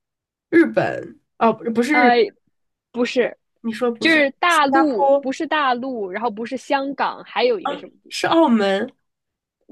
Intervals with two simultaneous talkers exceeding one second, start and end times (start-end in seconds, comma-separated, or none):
4.0-5.3